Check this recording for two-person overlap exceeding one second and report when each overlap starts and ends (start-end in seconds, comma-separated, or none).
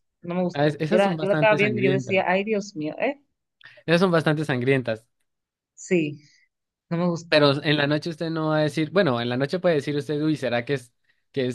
0.5-2.2